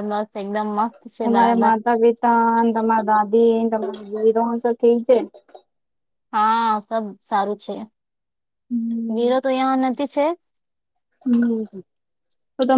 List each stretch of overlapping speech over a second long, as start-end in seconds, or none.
none